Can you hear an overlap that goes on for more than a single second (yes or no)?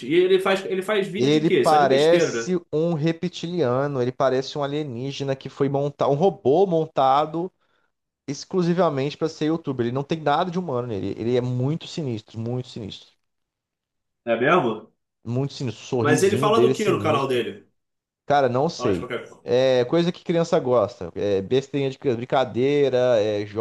yes